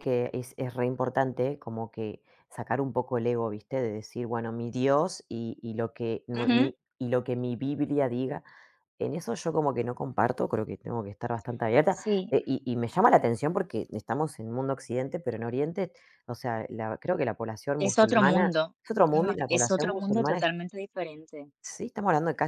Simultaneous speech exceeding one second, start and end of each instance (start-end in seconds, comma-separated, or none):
17.8-20.5